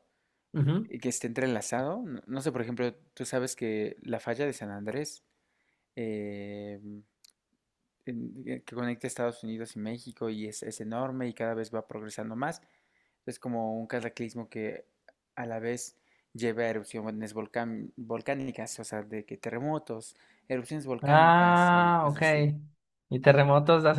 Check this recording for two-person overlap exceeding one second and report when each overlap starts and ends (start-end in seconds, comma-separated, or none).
21.0-22.2